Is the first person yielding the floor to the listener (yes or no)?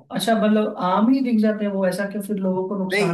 yes